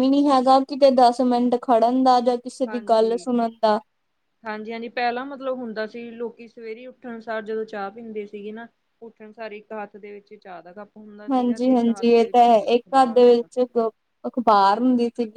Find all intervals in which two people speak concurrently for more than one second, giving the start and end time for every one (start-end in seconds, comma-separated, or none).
11.3-13.5